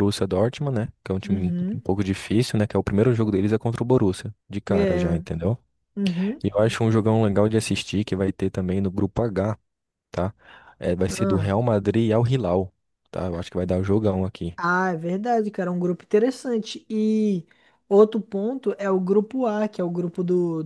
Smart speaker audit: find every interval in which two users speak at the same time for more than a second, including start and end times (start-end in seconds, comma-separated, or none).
none